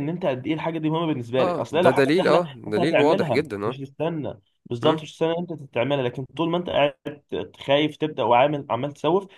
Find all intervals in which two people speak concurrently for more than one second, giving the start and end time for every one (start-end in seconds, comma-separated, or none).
1.4-3.8